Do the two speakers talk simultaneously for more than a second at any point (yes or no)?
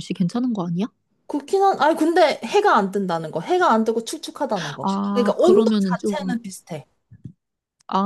yes